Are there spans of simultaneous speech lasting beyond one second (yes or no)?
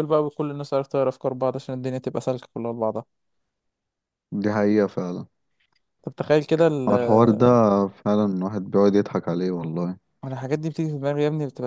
no